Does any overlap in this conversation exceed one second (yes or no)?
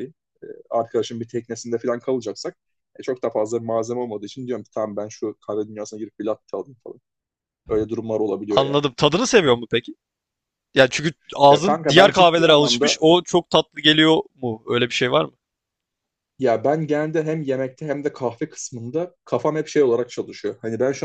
yes